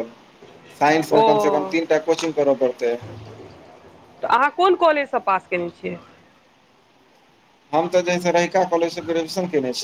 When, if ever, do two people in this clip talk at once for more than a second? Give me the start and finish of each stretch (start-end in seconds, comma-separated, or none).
none